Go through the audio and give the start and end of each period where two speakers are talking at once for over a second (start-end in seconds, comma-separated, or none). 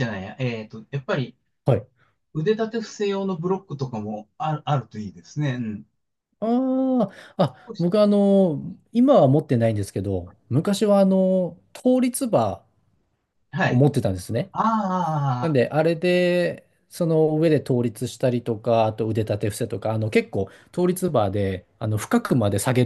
none